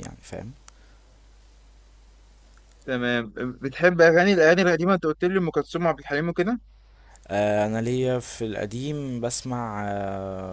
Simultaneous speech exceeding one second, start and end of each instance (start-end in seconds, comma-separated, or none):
none